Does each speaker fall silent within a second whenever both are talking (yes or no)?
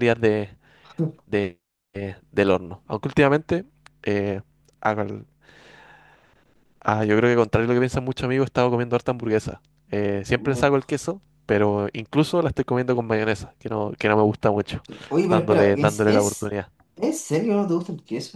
no